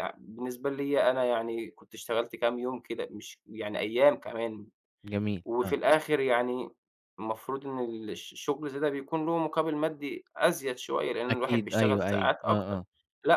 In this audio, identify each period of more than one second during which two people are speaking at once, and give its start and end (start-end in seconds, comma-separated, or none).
11.3-12.8